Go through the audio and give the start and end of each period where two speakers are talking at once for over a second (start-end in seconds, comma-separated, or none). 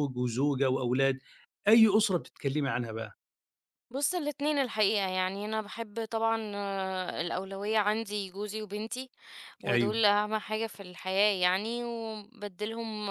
none